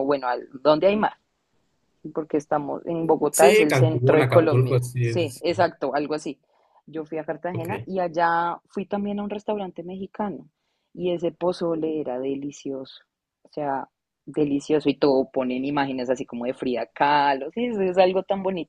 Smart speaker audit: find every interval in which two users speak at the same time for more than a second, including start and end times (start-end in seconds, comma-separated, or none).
3.3-5.4